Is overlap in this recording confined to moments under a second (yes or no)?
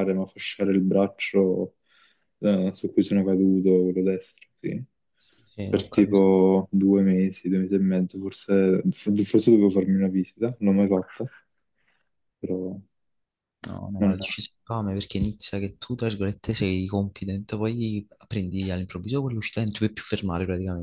yes